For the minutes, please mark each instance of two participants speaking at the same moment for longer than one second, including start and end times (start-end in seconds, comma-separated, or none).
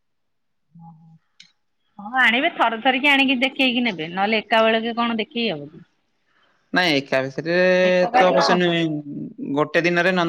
none